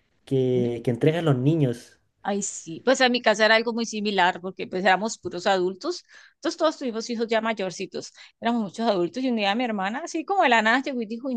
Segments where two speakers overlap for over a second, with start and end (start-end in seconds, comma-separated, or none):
none